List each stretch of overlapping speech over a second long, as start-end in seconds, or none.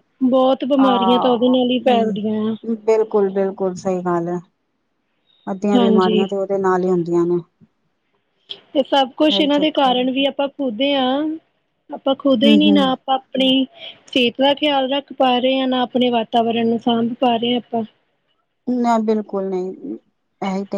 0.8-2.5